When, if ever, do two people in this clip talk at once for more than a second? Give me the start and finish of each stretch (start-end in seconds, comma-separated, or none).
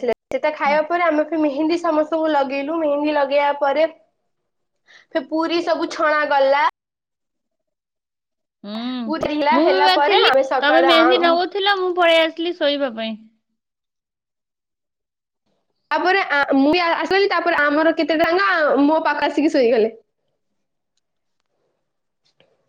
9.1-11.3